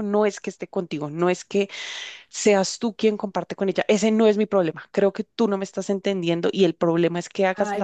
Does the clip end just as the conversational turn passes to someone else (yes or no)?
yes